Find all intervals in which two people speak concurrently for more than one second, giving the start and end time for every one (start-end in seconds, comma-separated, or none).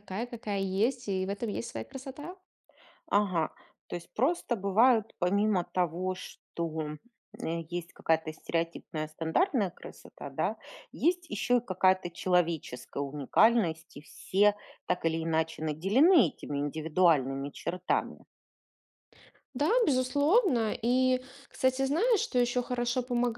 none